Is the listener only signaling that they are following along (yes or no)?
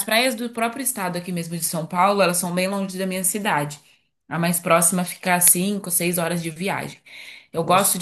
yes